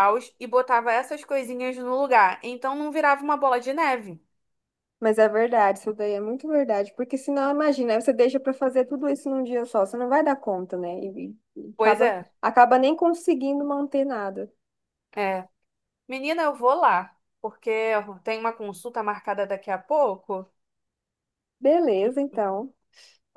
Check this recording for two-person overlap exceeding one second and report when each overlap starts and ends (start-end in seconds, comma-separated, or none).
none